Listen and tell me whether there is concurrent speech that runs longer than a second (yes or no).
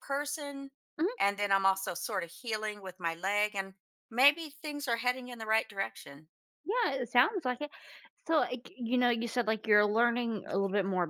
no